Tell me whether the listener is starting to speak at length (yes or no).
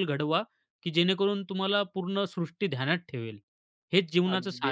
yes